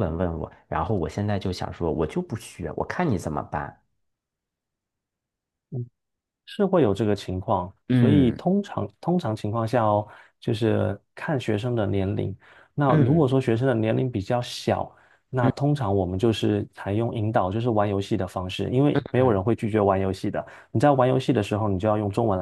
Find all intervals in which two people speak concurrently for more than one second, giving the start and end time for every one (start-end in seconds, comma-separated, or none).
none